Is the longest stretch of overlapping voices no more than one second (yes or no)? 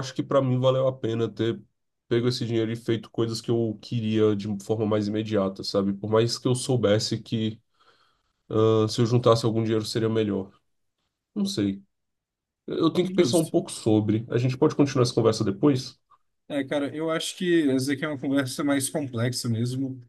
yes